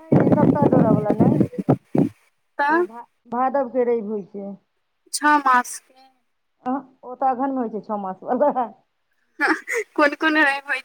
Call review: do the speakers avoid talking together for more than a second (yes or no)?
yes